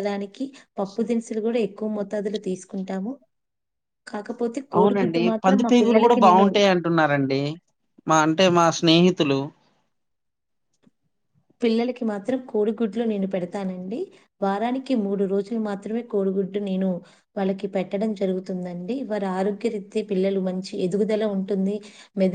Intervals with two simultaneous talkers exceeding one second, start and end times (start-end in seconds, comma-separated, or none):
4.8-6.5